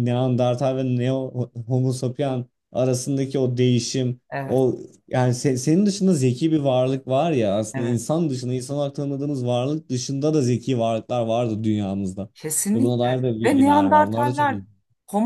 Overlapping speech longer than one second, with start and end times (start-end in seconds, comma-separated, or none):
12.7-14.6